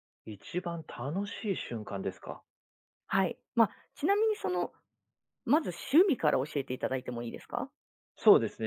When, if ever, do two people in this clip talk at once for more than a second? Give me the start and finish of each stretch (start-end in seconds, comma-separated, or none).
none